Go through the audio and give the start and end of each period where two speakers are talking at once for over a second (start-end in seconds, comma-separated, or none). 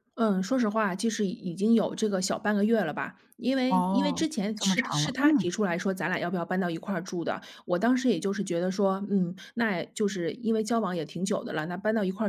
3.7-5.5